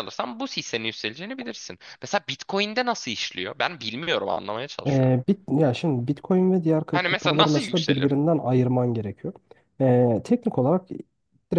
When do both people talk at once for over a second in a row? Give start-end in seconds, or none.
6.9-8.2